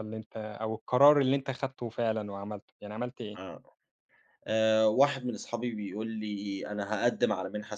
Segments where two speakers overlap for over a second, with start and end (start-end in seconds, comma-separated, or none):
none